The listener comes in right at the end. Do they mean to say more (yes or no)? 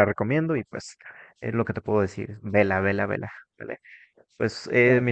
no